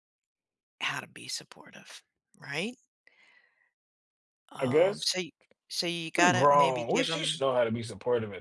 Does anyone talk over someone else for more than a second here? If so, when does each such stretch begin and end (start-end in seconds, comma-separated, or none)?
6.2-7.4